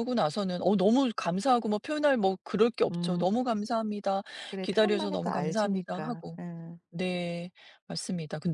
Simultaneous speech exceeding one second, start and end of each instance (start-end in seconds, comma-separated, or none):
4.6-6.4